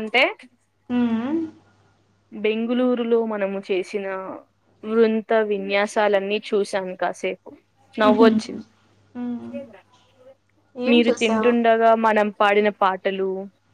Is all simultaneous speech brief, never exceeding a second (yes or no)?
yes